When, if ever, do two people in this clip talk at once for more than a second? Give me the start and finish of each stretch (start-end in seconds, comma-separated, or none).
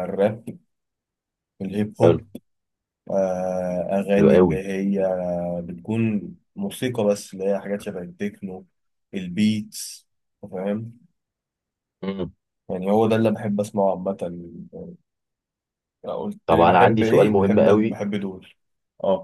16.5-18.0